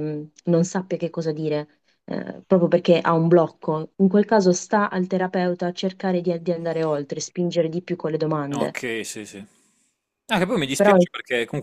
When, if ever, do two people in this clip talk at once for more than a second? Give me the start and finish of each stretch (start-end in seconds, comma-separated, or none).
none